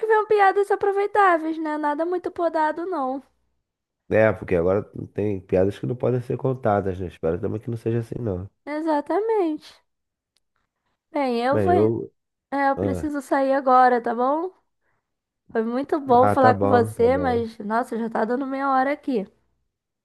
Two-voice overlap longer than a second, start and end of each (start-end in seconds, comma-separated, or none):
16.2-17.4